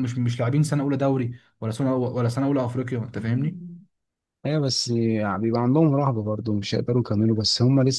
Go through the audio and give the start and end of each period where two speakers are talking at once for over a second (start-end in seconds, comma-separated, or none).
none